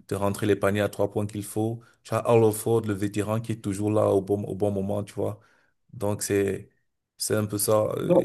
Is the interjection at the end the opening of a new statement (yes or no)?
no